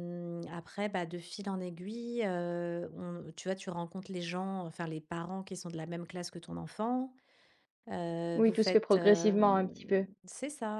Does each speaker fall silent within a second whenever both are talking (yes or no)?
no